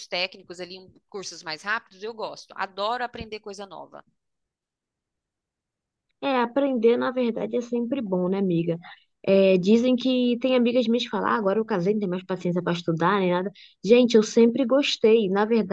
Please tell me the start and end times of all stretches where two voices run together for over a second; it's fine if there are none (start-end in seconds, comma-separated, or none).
none